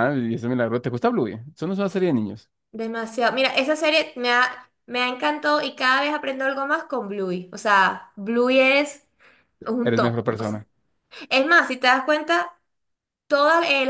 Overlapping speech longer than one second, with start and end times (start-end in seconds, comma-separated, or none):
none